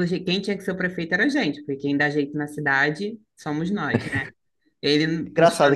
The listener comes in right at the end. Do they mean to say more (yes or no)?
yes